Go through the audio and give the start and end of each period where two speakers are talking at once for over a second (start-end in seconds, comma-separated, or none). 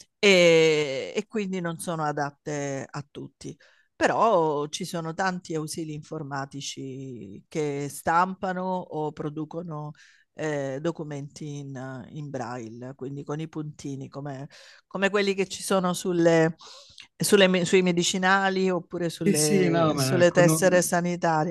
19.2-20.8